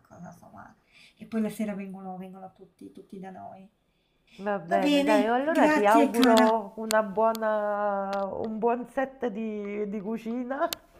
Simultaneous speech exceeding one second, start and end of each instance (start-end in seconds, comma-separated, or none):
4.7-6.6